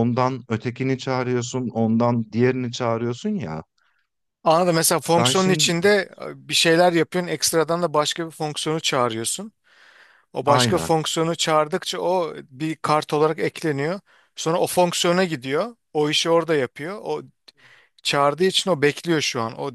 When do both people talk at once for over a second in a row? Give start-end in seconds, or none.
none